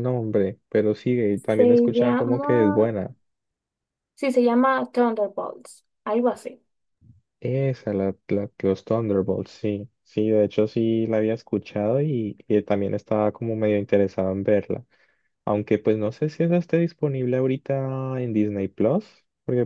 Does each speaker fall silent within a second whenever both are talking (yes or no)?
no